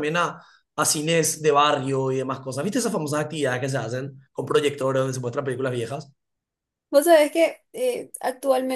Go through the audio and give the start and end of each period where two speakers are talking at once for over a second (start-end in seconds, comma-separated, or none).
none